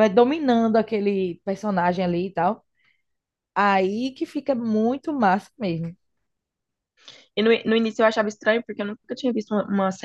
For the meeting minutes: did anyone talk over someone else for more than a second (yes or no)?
no